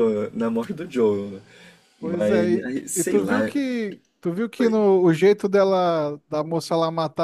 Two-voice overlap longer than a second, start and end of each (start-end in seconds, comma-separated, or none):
2.0-3.5